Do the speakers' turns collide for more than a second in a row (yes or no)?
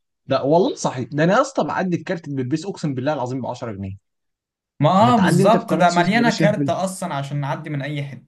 yes